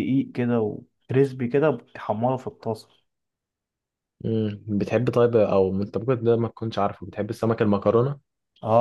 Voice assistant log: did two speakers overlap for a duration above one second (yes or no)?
no